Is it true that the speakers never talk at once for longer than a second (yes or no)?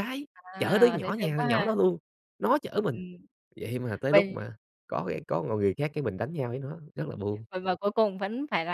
no